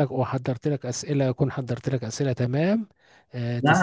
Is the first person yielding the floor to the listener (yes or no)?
yes